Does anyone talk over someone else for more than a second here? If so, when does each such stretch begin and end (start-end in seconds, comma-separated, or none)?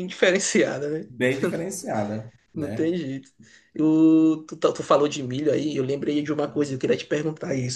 none